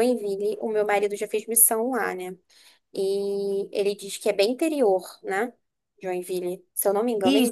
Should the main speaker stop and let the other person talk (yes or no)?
yes